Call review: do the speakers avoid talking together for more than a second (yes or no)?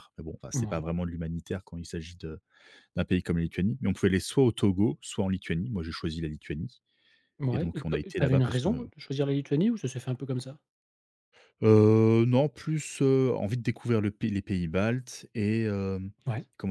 no